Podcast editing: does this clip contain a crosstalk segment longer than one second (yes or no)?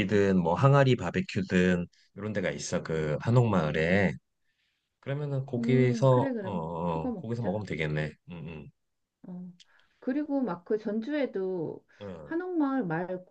yes